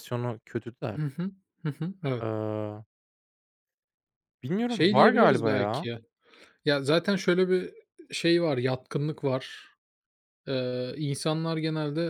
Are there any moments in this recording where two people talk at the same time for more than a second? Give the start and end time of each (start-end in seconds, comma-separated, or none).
4.7-5.9